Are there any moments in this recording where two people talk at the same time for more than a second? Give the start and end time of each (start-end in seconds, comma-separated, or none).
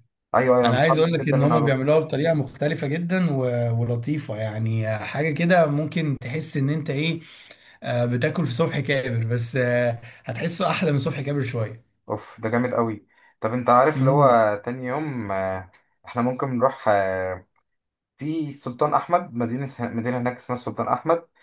0.6-1.9